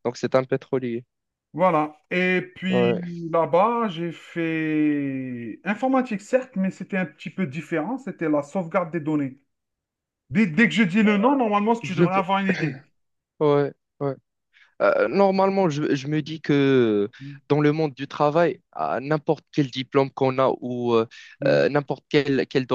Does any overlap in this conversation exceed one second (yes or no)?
no